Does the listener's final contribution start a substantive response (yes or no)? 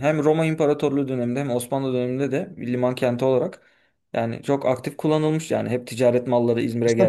yes